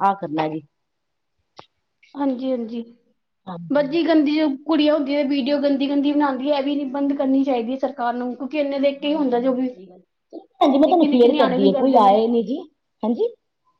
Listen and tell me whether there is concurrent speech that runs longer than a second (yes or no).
yes